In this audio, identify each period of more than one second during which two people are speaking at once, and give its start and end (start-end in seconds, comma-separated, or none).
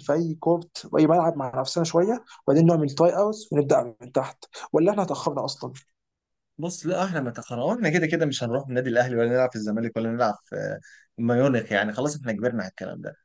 none